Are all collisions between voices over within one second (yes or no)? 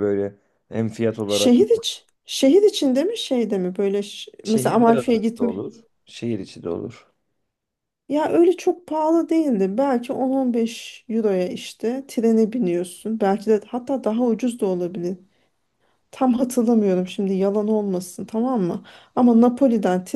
no